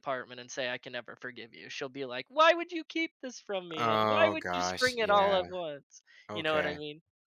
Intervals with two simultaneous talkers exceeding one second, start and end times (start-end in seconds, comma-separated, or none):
3.8-5.4